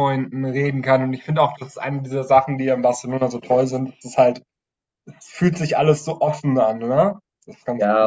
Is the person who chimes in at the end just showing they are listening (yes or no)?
no